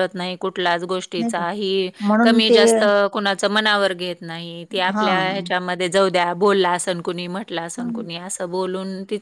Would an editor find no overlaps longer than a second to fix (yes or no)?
yes